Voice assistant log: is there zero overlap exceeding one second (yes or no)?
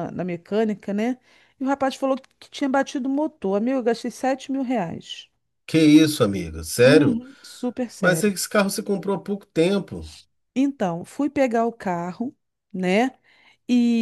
yes